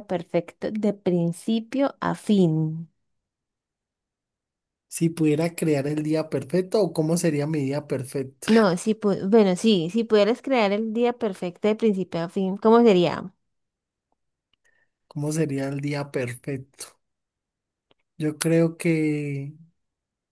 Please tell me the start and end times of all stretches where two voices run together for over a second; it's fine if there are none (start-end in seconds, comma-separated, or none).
none